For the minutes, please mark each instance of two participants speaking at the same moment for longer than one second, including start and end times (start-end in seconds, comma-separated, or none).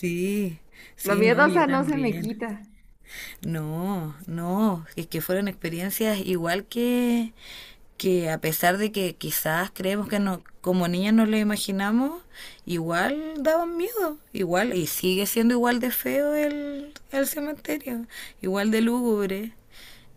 1.0-2.2